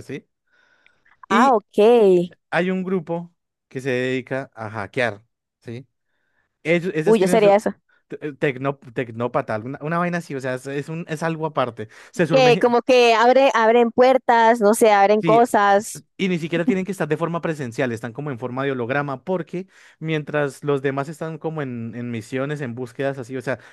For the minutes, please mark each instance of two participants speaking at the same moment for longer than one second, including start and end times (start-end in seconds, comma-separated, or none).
none